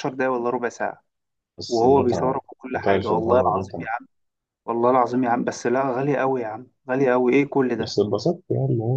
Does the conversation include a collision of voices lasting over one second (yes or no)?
yes